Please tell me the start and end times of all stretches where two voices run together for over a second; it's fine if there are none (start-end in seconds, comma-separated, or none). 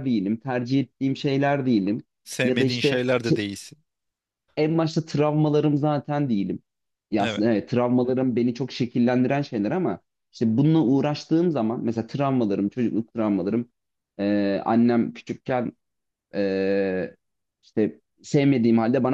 none